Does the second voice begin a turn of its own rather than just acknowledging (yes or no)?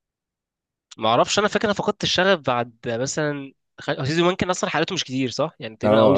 yes